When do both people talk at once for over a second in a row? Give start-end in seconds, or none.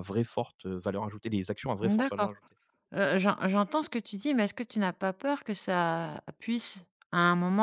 none